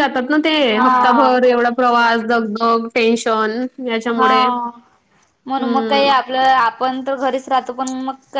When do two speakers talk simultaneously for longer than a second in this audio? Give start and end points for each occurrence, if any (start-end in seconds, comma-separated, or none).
0.6-2.1